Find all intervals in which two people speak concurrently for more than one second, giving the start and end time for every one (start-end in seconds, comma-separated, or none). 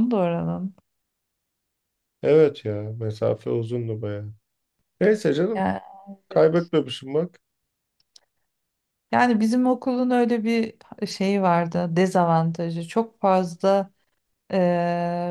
none